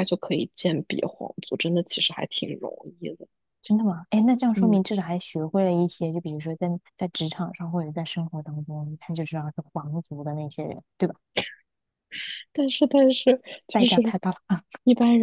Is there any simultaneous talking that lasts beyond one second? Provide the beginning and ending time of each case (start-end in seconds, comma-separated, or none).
none